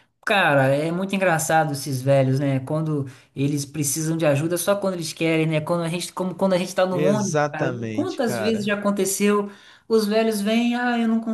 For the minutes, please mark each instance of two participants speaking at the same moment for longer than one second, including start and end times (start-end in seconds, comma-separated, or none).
6.9-8.7